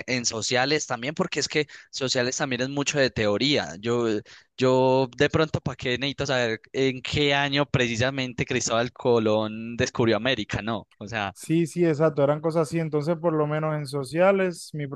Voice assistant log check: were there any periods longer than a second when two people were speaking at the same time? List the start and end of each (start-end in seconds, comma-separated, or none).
none